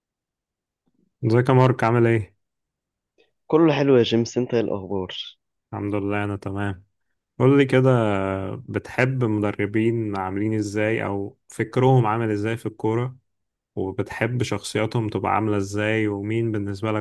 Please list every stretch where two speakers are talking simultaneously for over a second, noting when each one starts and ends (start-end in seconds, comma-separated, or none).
none